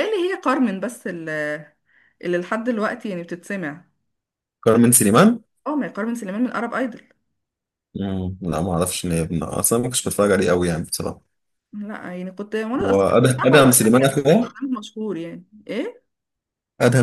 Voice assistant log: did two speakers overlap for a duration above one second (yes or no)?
yes